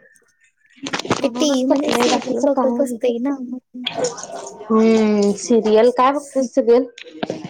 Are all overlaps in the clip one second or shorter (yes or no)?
no